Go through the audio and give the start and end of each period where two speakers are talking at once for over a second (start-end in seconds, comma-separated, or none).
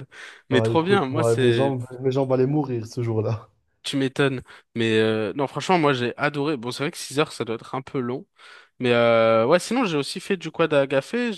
0.5-1.7